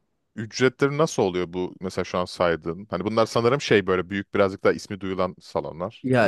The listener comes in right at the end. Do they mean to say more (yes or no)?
yes